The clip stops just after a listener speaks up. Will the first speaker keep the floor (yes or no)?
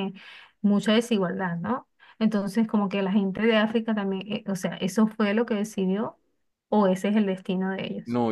no